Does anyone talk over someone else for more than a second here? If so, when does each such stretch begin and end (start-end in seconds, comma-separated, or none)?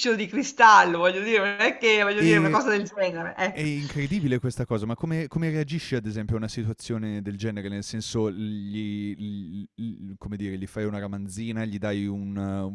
none